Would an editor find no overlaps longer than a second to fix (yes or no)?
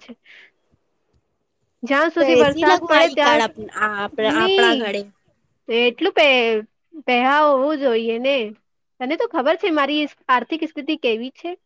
no